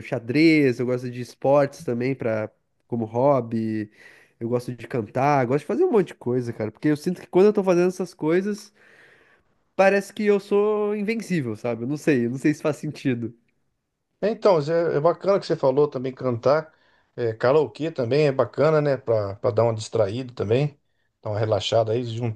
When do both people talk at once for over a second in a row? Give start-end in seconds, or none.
none